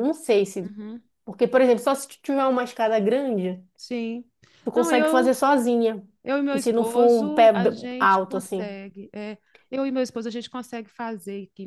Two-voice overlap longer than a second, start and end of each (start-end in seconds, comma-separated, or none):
6.5-8.8